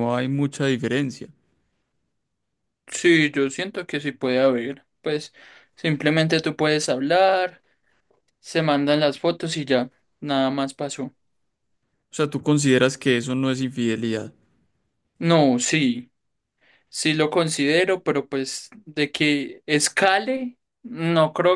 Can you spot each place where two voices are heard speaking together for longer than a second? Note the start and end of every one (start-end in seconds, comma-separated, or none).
none